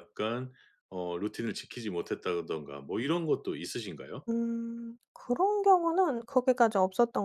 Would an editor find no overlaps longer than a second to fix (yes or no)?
yes